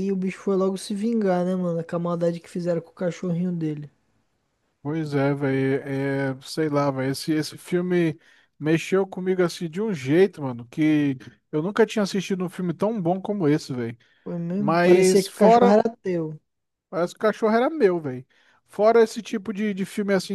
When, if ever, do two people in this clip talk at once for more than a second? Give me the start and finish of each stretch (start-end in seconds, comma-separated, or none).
14.6-15.8